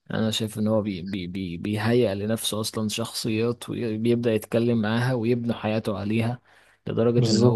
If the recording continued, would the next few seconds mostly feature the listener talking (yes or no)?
no